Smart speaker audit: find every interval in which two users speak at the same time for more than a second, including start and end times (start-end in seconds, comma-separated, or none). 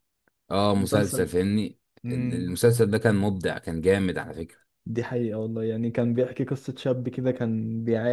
none